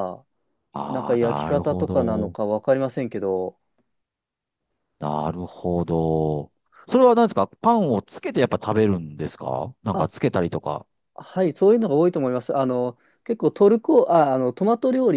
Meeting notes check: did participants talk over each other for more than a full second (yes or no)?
yes